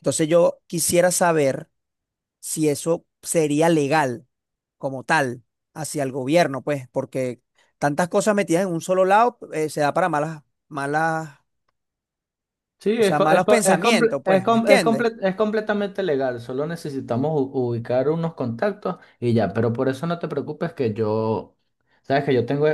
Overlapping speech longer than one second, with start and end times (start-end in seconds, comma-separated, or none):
12.9-15.1